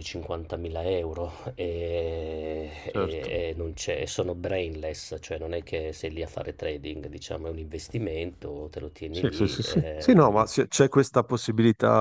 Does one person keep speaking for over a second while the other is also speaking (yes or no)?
yes